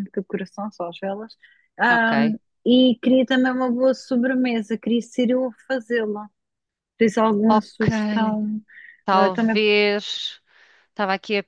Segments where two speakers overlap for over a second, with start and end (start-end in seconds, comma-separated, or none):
none